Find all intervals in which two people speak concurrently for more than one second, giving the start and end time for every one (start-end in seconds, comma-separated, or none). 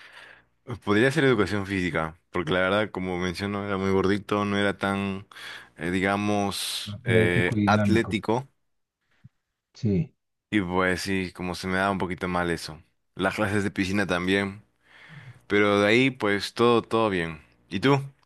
6.9-8.2